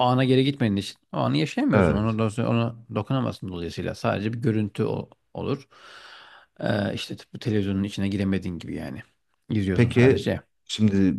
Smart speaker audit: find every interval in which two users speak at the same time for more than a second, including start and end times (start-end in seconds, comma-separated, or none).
none